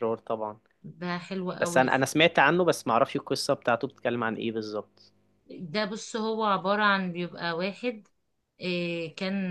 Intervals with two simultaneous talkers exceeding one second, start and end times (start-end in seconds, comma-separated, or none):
none